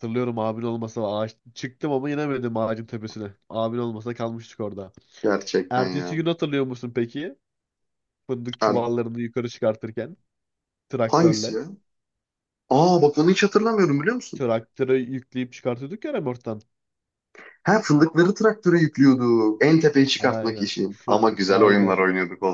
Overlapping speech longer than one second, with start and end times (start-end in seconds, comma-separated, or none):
20.2-22.0